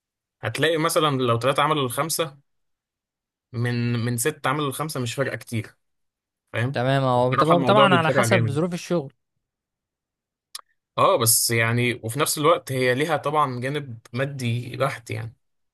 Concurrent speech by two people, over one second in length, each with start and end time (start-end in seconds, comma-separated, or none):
6.7-8.6